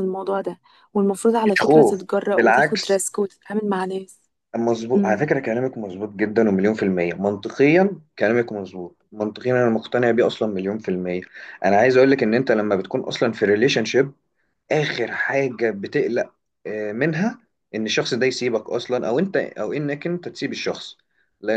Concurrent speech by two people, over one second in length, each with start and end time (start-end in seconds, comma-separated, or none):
1.4-3.0